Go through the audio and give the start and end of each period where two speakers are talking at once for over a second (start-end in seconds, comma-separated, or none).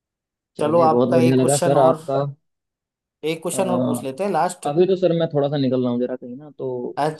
0.6-2.0